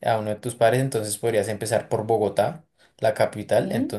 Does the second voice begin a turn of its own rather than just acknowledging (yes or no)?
no